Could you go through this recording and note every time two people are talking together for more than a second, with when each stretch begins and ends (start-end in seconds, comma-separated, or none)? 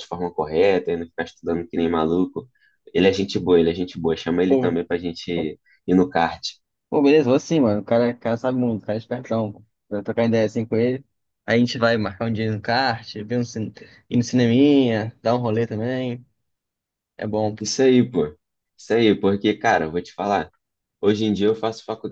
none